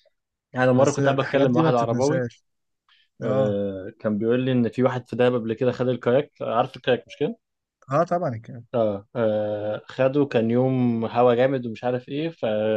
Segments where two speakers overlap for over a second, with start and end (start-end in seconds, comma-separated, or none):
0.8-2.3